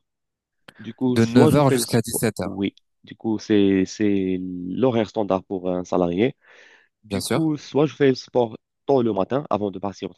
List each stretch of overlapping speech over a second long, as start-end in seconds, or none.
1.1-2.6